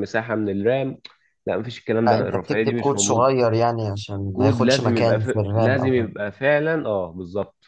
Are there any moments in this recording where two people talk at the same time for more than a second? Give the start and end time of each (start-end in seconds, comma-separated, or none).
2.0-3.3, 4.3-6.1